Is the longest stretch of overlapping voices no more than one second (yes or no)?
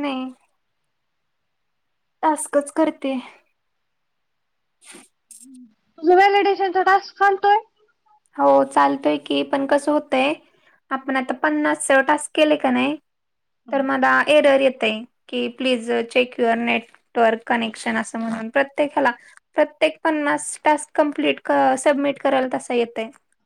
yes